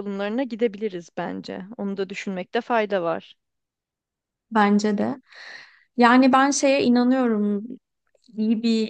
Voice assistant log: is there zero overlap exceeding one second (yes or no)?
yes